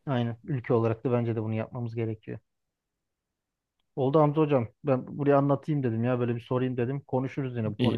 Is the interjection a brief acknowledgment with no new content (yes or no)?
no